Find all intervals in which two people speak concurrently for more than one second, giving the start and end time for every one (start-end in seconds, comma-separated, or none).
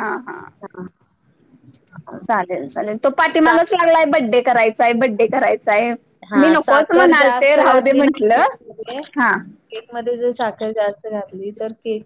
6.4-7.6